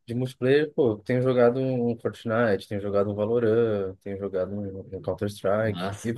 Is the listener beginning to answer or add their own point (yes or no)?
yes